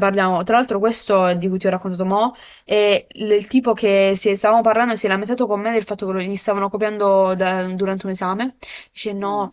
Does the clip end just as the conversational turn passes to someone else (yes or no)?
no